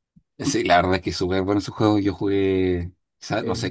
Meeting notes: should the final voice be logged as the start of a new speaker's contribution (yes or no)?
no